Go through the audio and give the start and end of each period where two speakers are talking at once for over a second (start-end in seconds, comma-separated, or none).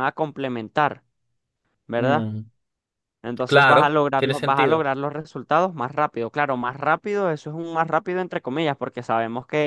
3.5-4.9